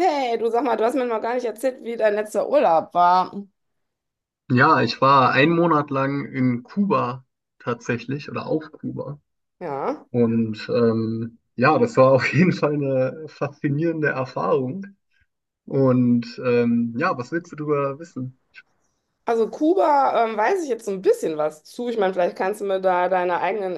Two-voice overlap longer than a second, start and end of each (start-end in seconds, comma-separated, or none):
none